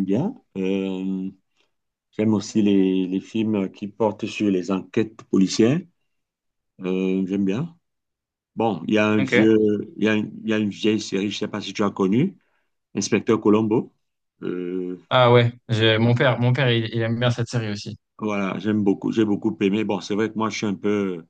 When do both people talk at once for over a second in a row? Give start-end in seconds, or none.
none